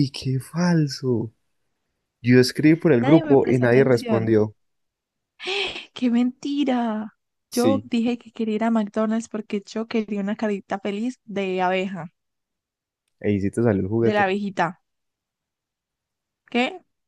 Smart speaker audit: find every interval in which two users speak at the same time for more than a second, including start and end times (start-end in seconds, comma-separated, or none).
3.0-4.3